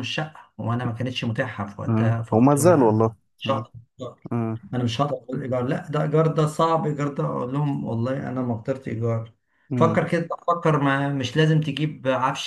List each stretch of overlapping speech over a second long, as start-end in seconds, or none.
1.9-3.6